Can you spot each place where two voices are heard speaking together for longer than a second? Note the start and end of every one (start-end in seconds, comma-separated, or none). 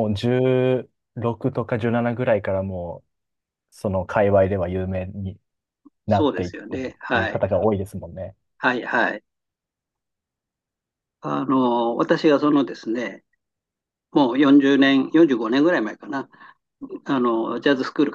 6.1-7.4